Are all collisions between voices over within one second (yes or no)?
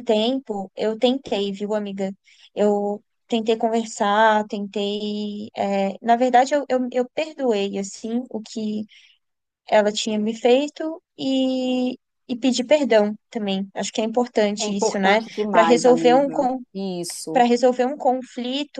no